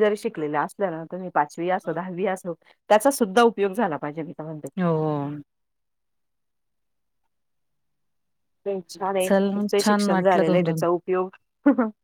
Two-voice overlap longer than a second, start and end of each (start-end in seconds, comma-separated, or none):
9.3-10.8